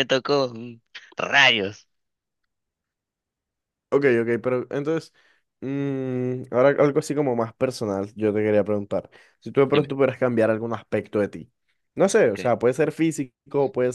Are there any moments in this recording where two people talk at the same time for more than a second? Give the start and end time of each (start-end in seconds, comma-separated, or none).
none